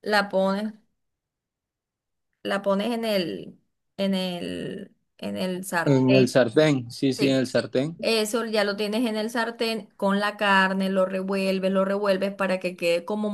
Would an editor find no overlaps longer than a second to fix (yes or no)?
yes